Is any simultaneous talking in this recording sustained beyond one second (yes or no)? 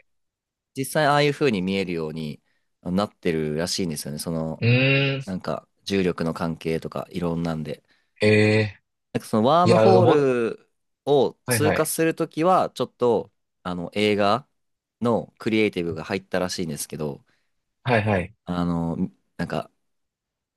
no